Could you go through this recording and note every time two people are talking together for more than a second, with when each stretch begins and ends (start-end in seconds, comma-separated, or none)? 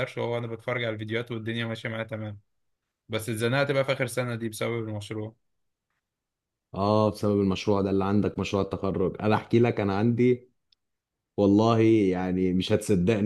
none